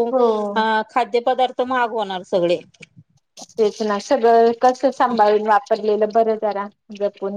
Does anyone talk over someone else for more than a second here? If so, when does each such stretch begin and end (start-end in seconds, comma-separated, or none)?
none